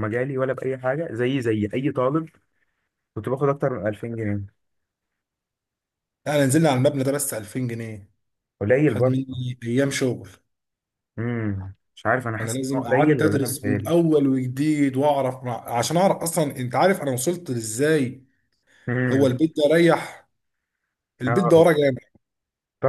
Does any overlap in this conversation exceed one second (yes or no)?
yes